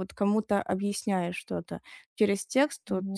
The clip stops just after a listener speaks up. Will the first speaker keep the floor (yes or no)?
yes